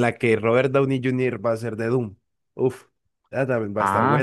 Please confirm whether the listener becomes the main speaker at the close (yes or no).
yes